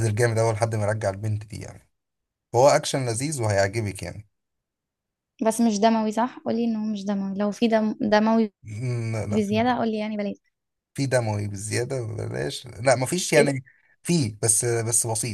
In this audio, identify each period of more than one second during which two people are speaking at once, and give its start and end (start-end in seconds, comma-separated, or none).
none